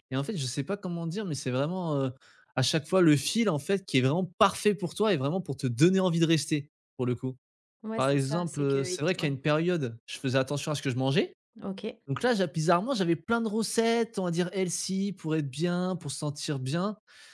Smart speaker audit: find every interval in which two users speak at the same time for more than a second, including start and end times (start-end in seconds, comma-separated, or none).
8.0-9.4